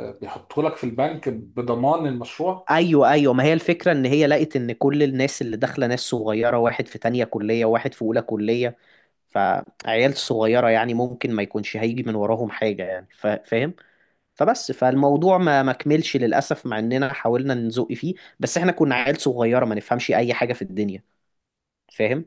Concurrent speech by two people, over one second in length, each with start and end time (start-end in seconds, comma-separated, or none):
none